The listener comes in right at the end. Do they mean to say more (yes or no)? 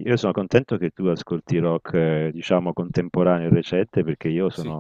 no